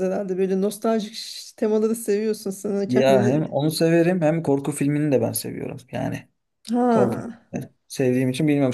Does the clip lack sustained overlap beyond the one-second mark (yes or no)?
yes